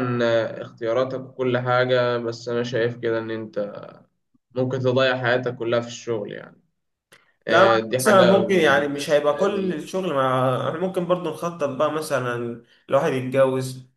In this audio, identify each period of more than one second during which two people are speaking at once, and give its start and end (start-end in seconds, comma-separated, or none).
7.5-9.8